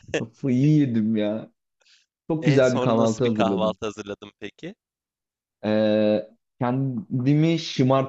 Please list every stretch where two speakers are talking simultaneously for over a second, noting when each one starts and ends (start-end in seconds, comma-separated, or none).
2.4-3.8